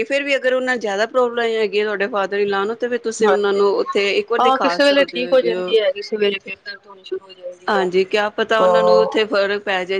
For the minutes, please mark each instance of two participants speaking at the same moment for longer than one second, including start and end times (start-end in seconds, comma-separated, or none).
4.4-5.7